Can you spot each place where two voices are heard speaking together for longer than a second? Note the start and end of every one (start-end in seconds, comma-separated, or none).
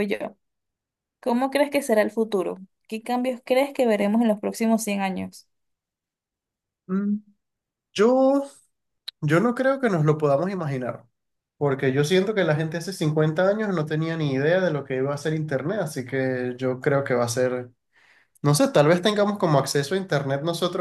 none